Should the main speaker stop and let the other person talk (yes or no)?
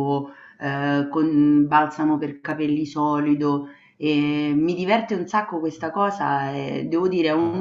no